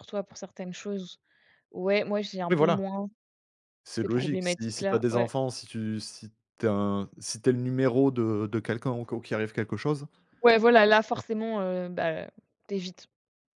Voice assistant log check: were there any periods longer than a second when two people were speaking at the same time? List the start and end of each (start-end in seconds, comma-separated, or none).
4.0-5.3